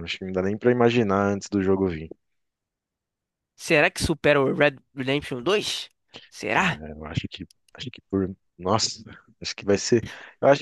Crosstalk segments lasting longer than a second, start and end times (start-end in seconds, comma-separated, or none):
none